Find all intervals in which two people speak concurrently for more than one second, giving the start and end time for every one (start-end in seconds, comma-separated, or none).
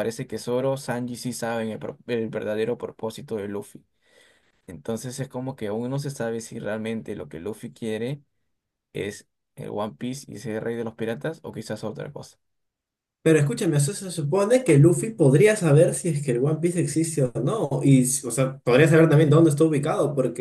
none